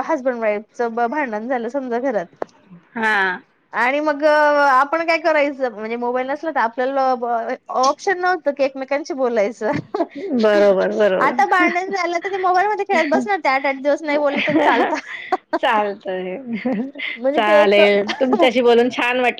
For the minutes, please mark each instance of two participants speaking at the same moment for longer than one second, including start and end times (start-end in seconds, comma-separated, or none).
17.4-18.6